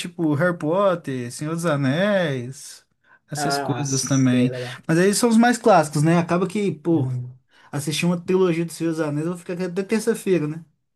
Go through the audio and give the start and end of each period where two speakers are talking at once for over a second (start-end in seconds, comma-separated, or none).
3.4-4.8